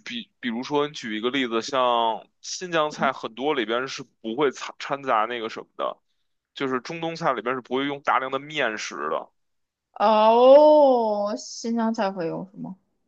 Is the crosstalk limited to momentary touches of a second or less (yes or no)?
yes